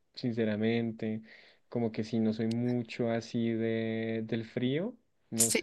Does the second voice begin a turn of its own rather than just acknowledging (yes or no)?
no